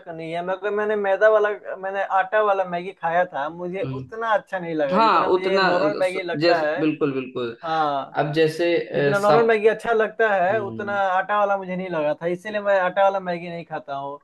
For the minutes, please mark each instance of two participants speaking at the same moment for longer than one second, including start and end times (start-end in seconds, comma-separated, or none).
4.9-6.8